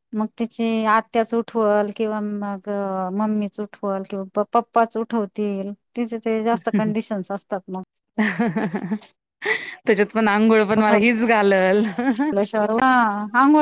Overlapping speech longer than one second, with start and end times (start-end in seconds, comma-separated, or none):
none